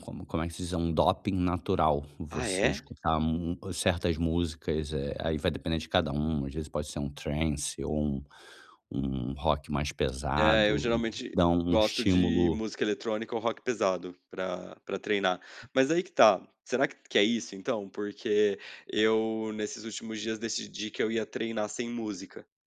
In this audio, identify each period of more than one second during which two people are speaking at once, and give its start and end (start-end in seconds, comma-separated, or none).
10.4-12.6